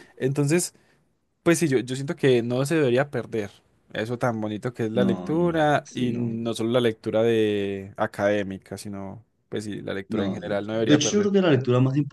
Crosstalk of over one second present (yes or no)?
yes